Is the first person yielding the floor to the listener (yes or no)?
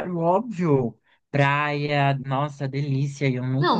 yes